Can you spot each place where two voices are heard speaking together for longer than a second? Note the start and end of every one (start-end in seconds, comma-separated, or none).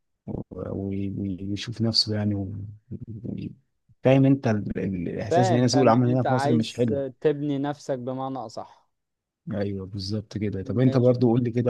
5.3-7.0